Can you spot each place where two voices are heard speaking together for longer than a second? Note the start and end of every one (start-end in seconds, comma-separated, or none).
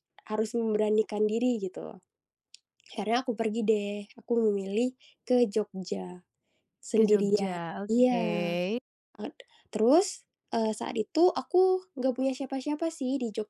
6.9-8.6